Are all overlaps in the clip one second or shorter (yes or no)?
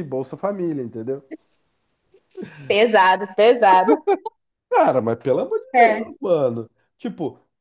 yes